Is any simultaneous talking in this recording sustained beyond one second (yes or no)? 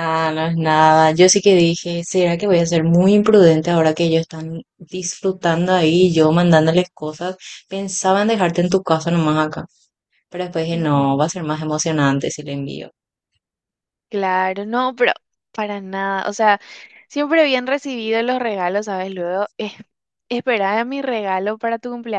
no